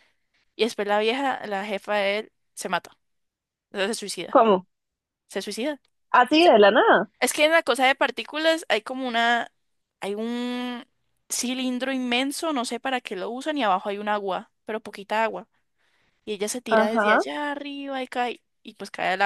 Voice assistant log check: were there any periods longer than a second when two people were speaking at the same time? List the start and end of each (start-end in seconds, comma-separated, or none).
none